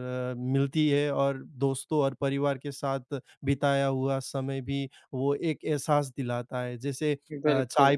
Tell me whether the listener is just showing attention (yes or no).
yes